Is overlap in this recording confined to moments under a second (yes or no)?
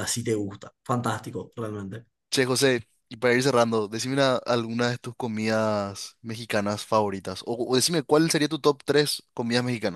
yes